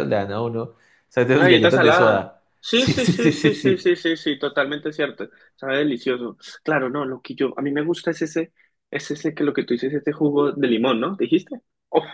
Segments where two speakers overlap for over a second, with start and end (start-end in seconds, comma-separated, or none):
1.3-3.9